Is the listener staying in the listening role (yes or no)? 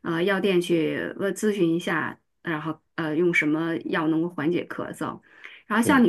yes